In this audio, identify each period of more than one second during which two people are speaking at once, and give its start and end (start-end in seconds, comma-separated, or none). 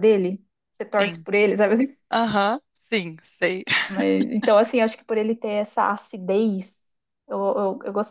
none